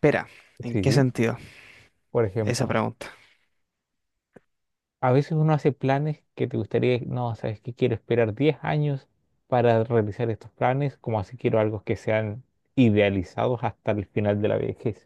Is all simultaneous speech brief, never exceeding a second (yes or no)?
yes